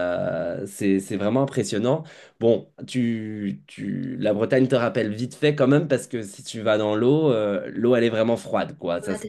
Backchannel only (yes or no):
yes